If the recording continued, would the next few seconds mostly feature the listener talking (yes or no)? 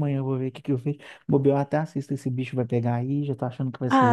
yes